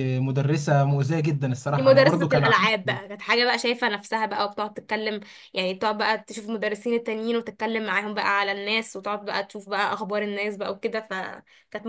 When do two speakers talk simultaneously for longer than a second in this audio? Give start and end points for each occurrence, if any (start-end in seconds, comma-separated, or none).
1.7-3.0